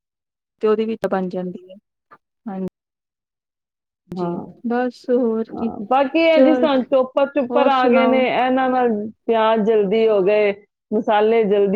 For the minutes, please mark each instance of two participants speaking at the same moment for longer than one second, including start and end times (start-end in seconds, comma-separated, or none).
7.5-8.8